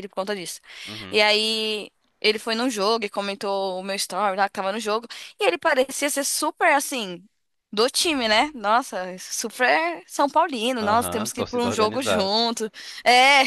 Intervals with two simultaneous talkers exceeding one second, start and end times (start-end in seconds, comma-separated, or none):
10.8-12.3